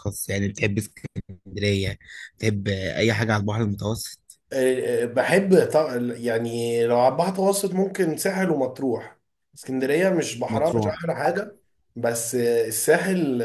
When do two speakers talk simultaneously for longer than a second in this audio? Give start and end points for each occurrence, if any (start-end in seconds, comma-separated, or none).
none